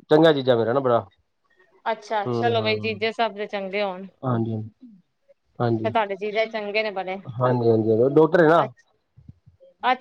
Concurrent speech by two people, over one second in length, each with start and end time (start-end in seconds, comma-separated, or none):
none